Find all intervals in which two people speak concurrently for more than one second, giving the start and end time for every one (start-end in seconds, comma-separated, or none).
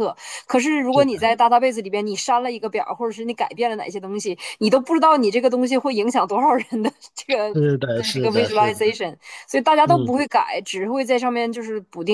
7.5-8.8